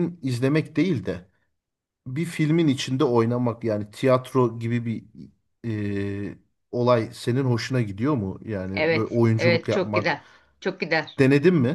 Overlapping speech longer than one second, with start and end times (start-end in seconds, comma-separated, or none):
8.7-10.2